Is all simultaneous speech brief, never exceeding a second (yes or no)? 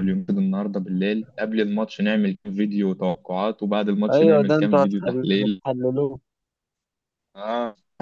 no